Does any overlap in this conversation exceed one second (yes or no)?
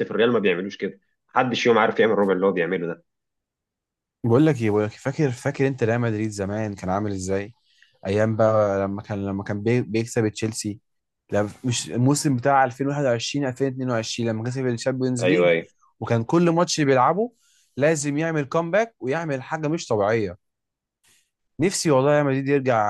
no